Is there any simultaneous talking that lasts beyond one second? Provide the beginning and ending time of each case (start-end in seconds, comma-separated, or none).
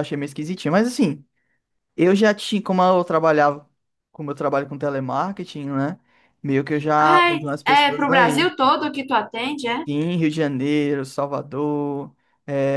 7.0-8.5